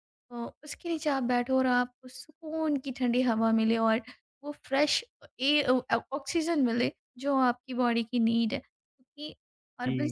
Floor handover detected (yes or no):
yes